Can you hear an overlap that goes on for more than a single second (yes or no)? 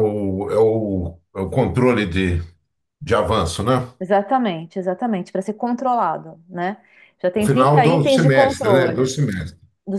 yes